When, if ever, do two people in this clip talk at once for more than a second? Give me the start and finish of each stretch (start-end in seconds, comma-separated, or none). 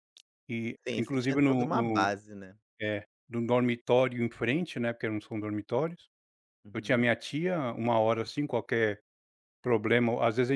0.9-2.1